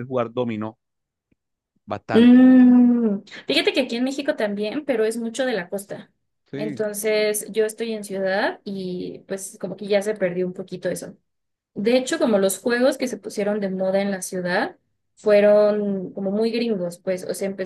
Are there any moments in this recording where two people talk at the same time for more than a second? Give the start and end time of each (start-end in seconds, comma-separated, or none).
none